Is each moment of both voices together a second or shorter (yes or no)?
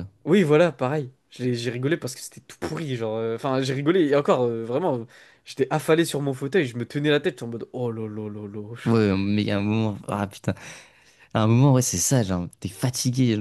yes